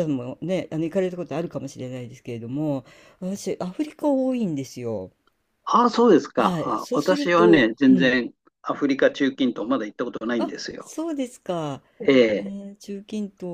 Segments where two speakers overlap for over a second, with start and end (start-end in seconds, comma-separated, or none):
6.4-8.2